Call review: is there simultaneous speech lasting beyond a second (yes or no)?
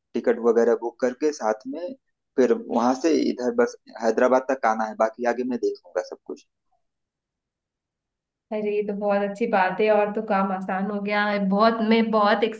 no